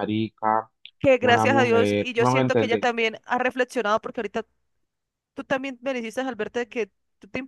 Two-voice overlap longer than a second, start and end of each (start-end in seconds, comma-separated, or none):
1.2-2.9